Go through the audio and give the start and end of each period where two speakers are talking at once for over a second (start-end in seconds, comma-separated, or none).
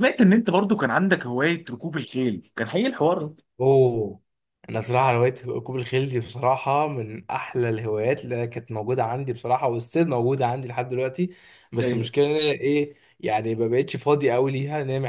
none